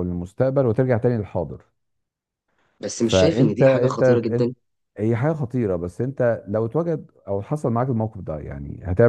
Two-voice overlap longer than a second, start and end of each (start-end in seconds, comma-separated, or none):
3.0-4.5